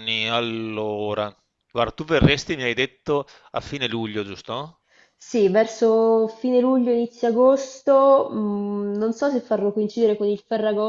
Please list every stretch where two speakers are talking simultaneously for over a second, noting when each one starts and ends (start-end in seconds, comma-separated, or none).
none